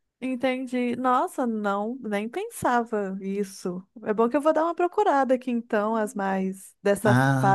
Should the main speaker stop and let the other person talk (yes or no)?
yes